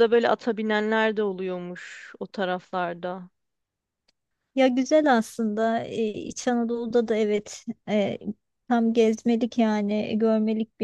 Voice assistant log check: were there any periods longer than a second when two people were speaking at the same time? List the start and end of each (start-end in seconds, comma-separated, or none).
none